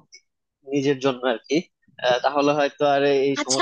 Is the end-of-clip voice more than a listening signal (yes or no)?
yes